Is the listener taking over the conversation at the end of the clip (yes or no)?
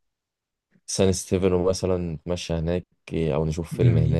yes